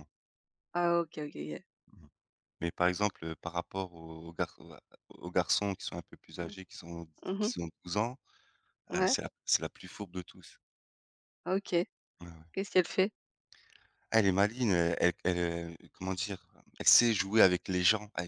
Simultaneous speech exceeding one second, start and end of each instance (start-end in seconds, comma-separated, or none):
none